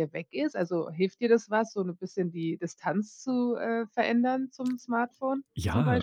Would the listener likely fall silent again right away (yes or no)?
no